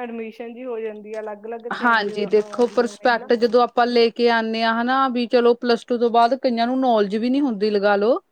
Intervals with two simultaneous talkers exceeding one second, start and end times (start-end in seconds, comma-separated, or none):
1.8-3.3